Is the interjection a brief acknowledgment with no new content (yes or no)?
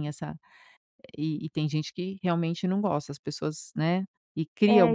no